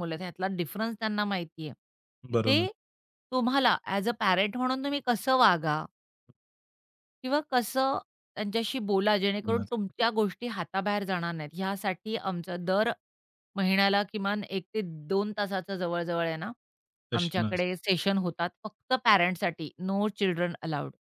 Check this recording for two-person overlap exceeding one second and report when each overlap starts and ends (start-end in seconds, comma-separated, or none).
none